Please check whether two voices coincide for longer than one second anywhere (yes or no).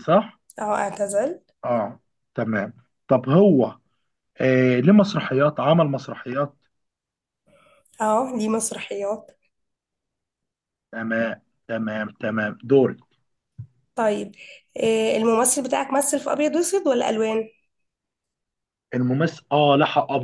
no